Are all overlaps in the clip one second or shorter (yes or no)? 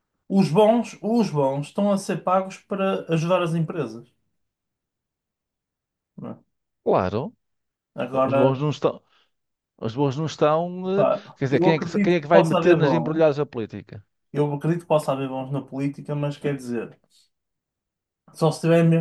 no